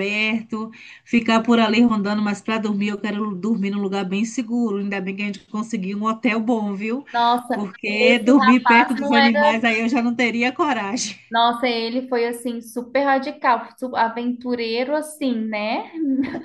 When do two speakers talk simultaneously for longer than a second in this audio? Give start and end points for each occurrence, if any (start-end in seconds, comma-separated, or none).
7.5-9.4